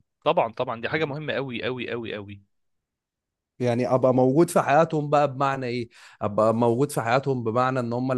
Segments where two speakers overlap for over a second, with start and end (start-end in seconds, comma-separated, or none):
none